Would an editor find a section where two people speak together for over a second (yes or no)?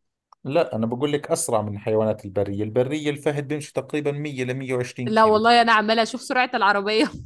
no